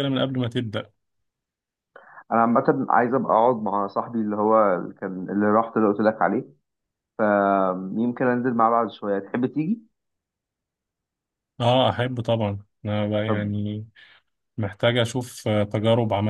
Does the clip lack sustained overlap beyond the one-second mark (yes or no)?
yes